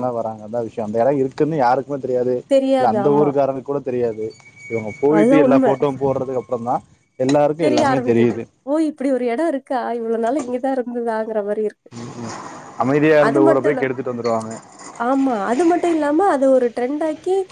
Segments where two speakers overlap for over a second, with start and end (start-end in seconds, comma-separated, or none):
none